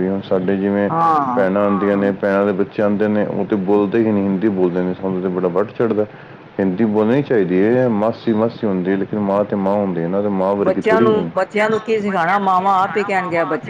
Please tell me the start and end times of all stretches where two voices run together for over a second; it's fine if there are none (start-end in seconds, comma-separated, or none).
none